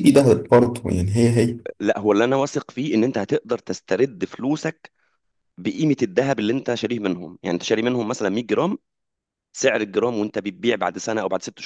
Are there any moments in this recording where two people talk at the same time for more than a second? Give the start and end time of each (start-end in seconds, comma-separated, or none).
none